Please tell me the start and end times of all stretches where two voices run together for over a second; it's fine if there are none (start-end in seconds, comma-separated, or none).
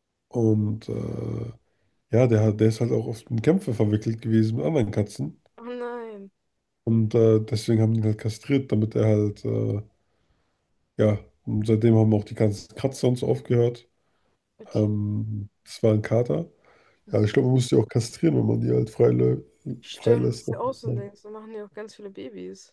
none